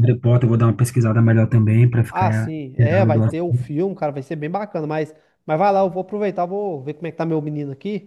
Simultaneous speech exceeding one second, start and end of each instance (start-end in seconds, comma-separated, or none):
2.1-3.6